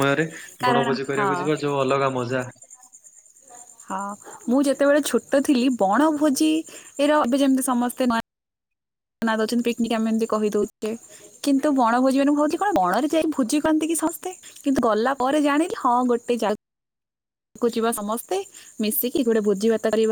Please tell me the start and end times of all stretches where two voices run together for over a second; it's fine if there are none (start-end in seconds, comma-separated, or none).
none